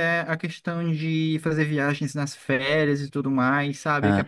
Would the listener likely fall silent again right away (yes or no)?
yes